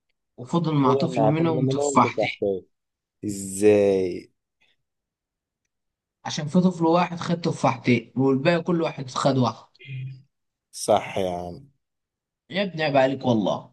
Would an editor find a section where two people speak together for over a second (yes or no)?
yes